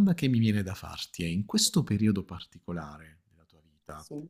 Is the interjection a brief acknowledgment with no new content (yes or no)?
yes